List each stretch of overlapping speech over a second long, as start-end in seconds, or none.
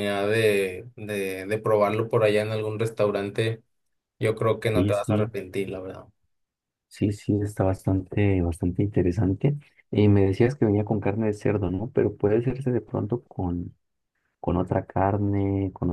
none